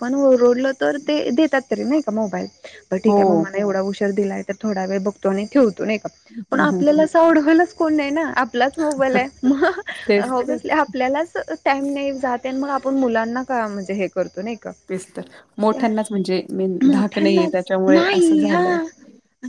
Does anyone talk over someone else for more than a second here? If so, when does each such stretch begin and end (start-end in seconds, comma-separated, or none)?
16.9-18.8